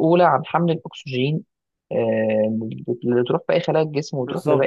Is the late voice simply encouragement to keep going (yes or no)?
no